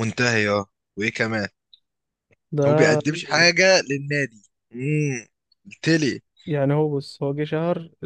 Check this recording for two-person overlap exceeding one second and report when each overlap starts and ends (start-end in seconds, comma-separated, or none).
none